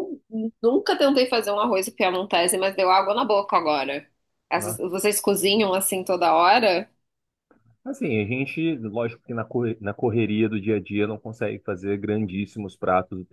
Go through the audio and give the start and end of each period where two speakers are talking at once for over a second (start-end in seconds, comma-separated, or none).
none